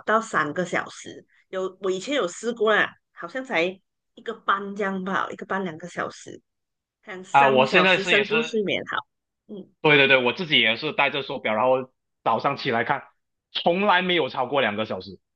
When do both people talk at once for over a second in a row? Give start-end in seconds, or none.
7.3-8.5